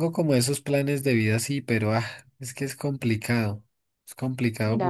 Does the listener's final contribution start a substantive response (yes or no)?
yes